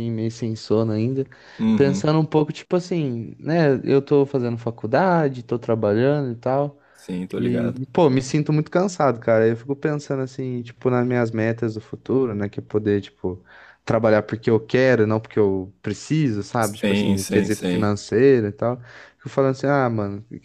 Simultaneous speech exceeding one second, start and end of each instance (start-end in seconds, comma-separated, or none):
16.6-17.9